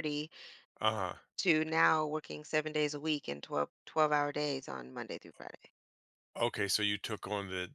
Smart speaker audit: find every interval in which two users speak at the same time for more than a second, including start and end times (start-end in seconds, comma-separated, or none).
none